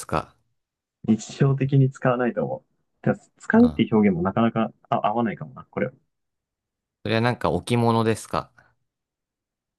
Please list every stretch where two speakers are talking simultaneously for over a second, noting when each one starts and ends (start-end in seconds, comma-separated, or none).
none